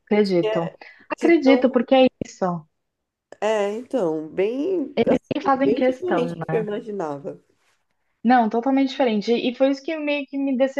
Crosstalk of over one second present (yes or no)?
yes